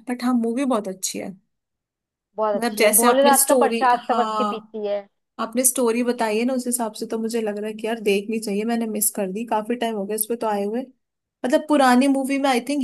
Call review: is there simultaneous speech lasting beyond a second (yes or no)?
yes